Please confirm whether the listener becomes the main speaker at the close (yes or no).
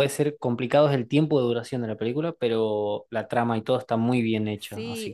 yes